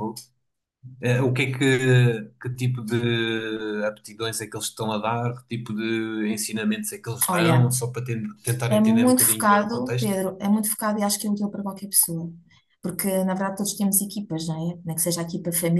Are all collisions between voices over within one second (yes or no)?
no